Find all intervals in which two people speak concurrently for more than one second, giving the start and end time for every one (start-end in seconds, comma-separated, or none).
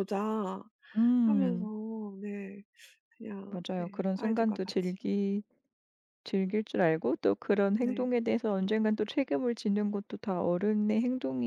3.5-5.0